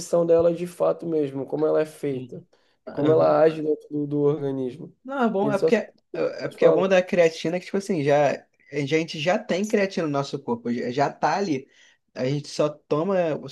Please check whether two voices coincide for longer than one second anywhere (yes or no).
yes